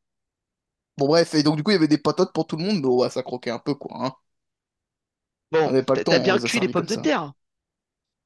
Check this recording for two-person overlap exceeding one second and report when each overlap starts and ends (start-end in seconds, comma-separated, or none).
5.7-7.1